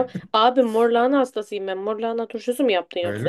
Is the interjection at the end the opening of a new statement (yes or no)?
yes